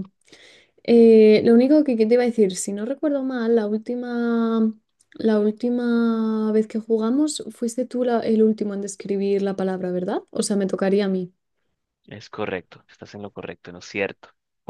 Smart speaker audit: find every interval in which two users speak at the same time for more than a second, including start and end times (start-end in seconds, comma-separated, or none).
none